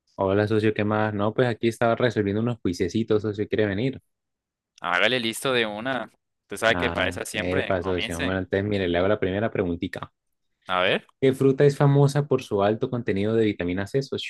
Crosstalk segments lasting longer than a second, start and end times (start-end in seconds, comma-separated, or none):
6.7-8.4